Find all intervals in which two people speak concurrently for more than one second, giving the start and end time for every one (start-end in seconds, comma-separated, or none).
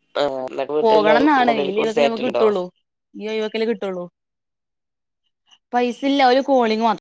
0.8-2.4